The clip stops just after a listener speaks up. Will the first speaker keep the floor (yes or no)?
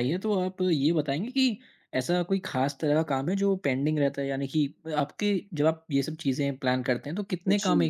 yes